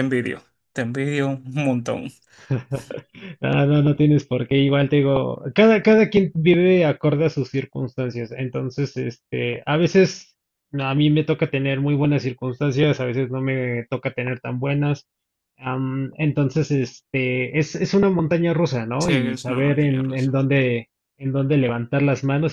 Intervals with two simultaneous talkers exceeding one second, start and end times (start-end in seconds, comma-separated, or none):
19.0-20.4